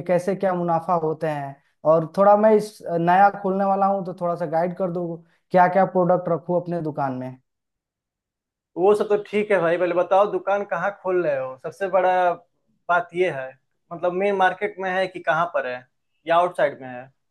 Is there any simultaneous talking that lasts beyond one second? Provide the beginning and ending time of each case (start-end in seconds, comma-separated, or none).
none